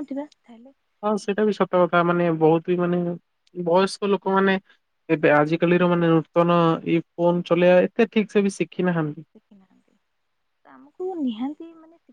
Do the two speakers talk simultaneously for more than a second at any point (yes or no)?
no